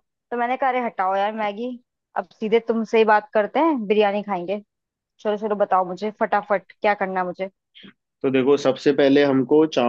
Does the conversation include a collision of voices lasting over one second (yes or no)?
no